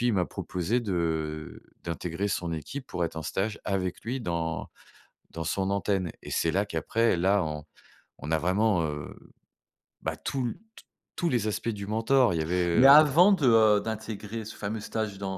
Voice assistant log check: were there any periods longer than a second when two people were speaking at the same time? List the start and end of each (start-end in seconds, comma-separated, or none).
none